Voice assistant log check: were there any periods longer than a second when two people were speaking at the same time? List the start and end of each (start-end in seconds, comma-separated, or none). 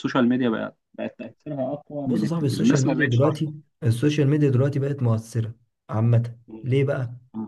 2.0-3.4